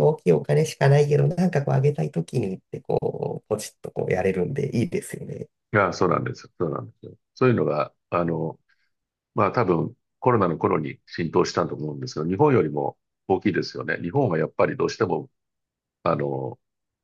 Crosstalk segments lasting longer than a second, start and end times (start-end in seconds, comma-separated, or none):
none